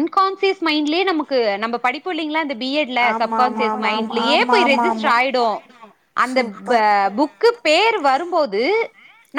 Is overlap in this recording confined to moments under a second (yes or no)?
no